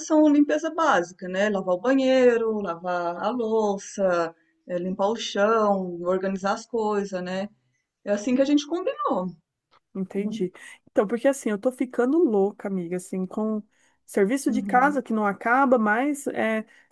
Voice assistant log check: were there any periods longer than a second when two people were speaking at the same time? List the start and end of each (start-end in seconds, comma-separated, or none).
none